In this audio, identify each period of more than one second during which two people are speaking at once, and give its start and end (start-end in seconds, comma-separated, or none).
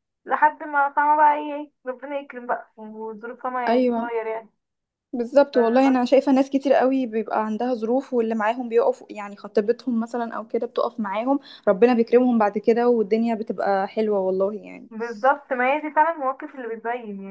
none